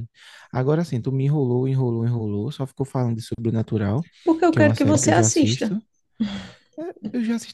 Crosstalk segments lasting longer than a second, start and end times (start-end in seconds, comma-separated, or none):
4.5-5.8